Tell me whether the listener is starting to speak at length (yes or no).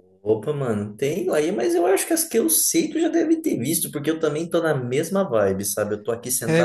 no